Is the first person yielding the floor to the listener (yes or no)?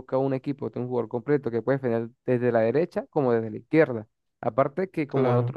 no